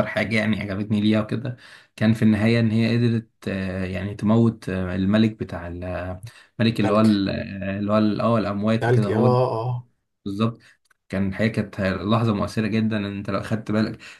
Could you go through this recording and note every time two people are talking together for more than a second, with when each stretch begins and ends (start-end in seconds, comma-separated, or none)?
none